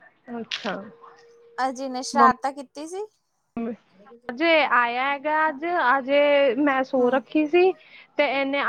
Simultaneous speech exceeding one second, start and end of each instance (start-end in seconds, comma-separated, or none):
none